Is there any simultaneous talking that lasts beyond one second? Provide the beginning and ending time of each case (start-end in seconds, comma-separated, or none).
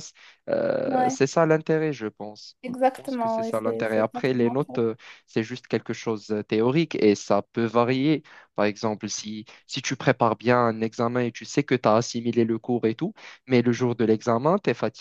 2.6-4.7